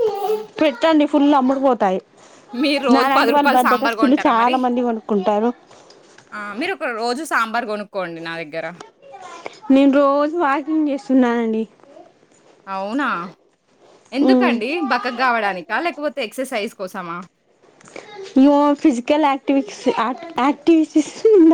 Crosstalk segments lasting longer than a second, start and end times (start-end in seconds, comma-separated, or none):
2.9-4.6